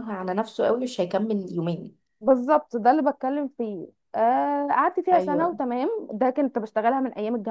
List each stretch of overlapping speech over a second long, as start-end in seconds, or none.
none